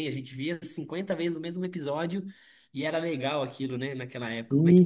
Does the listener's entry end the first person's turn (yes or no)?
yes